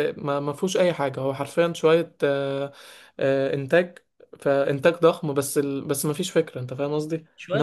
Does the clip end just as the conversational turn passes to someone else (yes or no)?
no